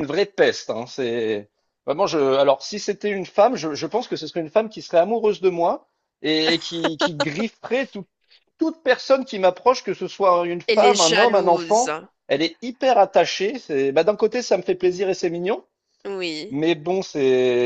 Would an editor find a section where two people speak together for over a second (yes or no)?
yes